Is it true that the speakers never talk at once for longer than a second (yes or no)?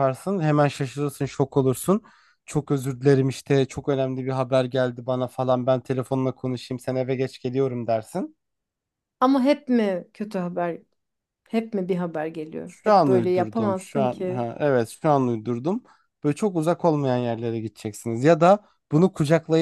no